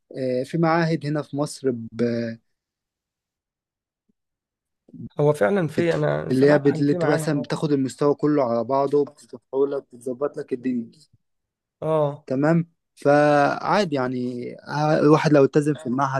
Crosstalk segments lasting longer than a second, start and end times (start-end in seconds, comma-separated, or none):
5.8-7.5